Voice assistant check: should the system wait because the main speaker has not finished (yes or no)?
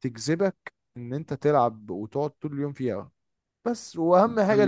yes